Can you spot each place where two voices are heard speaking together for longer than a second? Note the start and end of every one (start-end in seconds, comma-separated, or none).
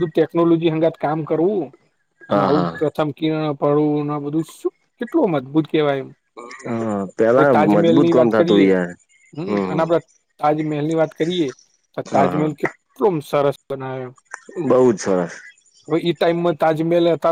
7.3-8.7